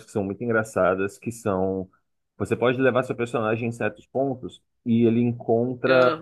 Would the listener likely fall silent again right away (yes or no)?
yes